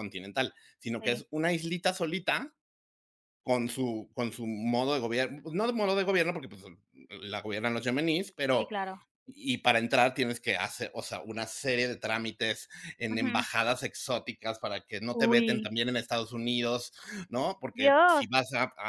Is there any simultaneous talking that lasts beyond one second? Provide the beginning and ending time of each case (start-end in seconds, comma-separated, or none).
none